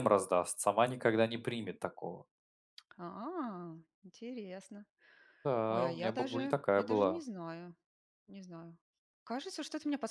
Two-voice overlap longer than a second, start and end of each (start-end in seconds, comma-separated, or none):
5.7-7.2